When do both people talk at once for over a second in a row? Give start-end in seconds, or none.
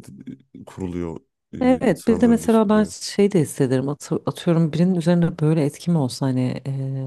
1.6-2.9